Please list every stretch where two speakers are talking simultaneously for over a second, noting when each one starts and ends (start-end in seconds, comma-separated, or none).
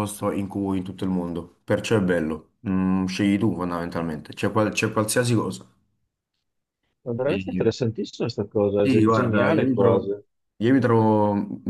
8.8-10.0